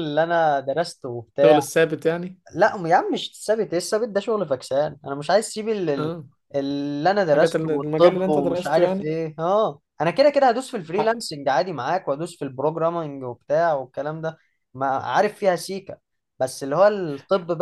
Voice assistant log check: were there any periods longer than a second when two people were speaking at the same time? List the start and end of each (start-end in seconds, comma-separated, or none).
7.2-9.1